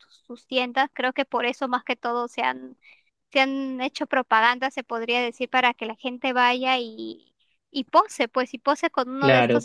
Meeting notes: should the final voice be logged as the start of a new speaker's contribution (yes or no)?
yes